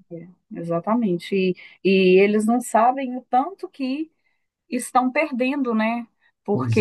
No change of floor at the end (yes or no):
yes